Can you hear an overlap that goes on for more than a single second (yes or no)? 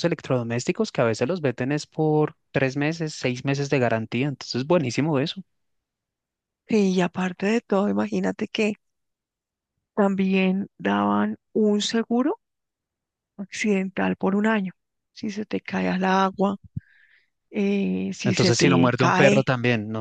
yes